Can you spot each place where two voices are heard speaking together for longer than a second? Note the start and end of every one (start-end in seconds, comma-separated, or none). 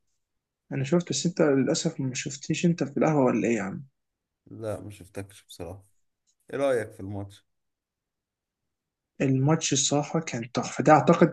none